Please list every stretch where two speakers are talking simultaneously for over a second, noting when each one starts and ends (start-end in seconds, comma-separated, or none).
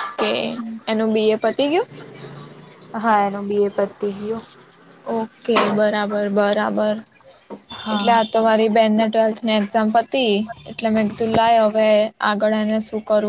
none